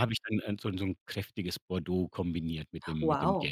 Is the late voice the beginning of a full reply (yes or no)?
yes